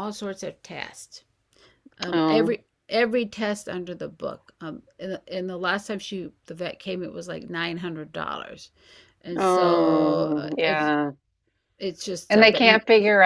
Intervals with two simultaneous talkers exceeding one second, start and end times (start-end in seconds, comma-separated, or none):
9.4-10.9